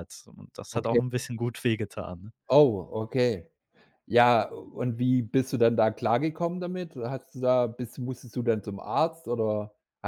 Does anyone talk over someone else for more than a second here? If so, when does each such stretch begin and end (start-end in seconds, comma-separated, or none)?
none